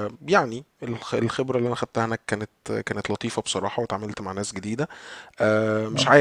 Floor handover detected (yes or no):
no